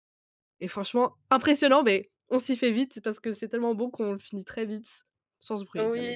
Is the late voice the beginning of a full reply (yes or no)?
yes